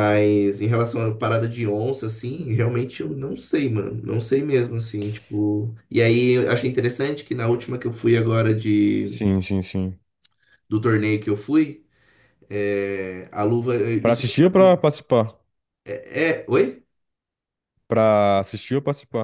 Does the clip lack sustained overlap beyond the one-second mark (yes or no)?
yes